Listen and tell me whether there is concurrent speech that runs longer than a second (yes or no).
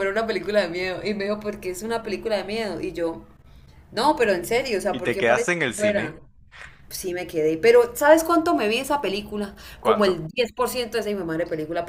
yes